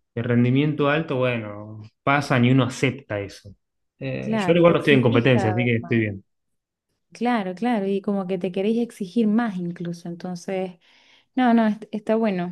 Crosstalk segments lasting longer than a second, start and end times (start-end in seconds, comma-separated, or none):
4.2-6.0